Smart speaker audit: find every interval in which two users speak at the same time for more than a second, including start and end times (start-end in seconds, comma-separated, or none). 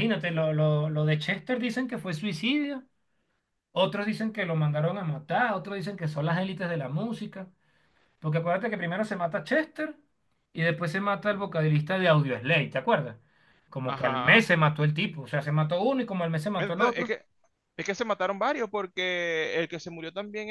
none